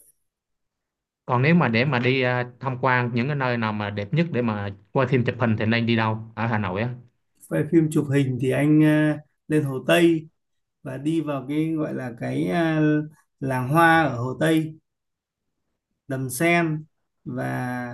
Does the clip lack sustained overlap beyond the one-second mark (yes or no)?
yes